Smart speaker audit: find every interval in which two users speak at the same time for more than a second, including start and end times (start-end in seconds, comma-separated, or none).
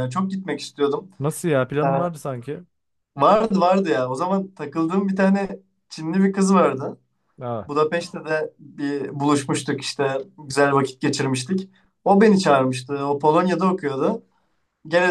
none